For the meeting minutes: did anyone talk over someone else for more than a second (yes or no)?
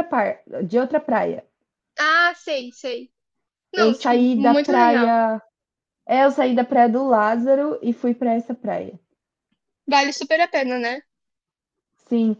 yes